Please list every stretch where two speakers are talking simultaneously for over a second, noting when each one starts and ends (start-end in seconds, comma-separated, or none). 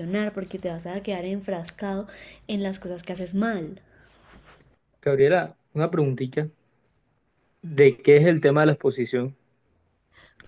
none